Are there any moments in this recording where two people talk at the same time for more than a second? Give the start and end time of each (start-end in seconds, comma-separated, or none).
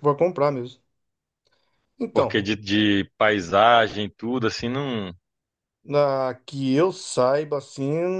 none